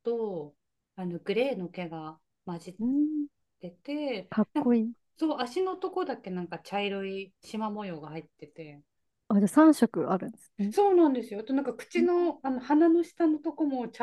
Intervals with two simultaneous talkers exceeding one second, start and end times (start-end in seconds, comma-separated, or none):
none